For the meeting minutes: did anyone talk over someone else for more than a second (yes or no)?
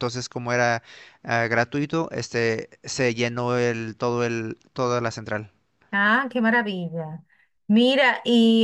no